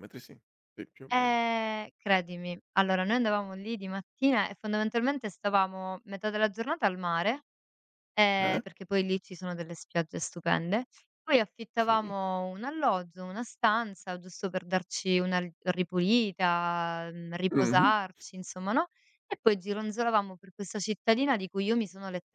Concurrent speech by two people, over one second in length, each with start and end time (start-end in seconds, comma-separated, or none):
none